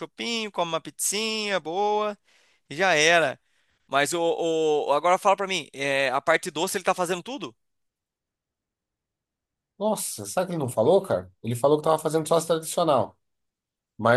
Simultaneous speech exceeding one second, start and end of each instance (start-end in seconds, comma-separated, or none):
none